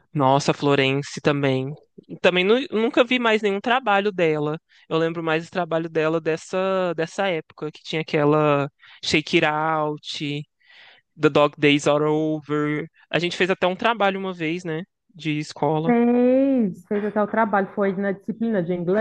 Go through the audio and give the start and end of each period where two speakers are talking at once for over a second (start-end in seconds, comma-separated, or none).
none